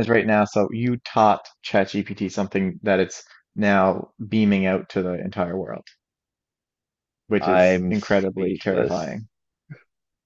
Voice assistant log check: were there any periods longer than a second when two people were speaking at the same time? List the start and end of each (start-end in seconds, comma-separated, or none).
7.4-9.2